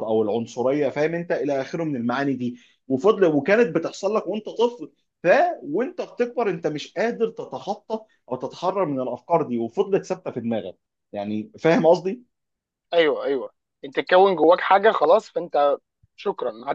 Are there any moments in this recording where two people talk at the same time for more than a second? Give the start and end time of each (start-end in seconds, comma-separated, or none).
none